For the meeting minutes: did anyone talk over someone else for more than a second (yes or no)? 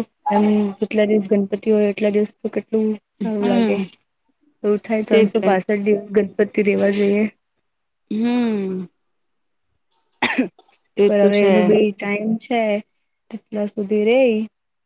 no